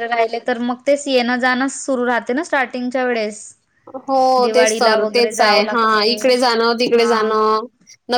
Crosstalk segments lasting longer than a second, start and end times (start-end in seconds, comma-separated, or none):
4.4-6.3